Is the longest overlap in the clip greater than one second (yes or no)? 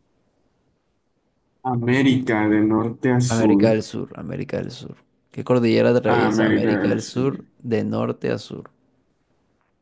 yes